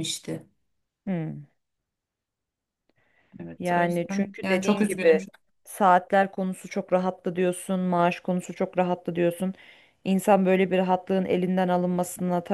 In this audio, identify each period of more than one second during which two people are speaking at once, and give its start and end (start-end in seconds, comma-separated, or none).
3.6-5.2